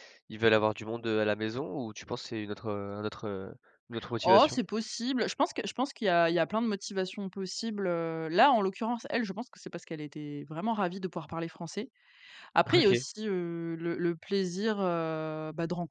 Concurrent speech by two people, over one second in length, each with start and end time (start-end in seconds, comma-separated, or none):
none